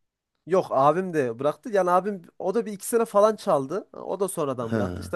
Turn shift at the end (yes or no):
no